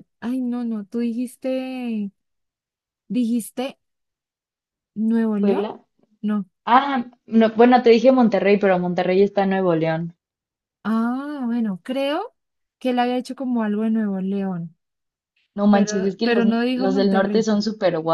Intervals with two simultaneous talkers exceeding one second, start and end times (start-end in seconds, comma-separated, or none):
15.7-17.5